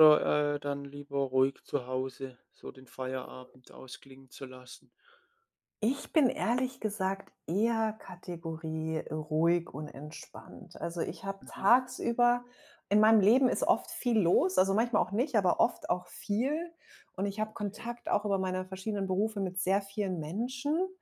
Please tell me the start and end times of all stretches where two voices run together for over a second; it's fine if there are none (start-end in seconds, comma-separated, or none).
none